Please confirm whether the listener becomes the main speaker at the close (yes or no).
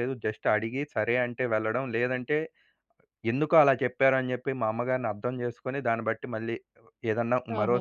yes